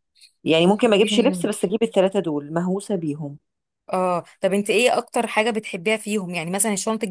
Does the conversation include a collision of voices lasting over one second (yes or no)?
no